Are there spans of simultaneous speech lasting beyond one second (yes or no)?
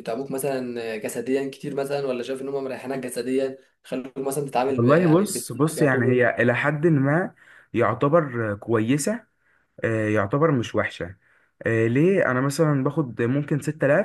yes